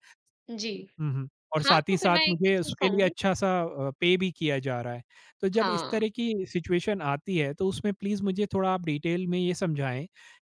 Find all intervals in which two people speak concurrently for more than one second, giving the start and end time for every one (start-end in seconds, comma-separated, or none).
1.6-3.1